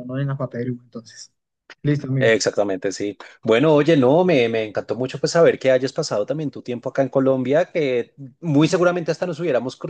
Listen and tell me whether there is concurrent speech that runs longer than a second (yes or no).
no